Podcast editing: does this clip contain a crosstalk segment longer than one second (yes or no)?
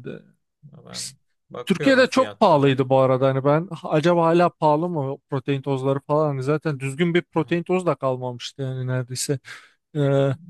yes